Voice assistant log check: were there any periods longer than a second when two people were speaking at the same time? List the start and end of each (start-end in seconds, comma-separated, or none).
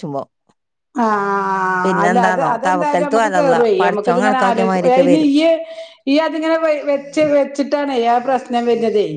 2.7-5.3